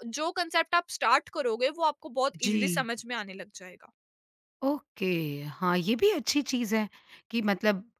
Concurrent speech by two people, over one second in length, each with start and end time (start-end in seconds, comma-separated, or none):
none